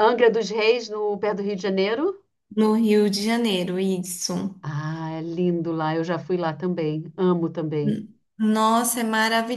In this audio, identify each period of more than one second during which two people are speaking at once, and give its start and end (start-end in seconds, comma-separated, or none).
none